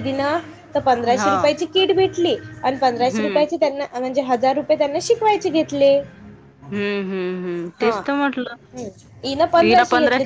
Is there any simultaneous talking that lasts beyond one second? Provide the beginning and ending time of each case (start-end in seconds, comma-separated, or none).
none